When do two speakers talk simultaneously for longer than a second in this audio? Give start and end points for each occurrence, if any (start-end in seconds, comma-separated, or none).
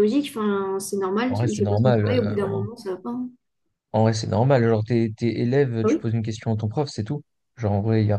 1.3-2.6